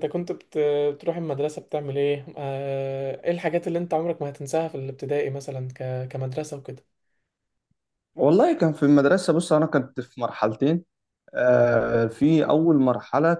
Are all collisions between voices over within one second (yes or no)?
yes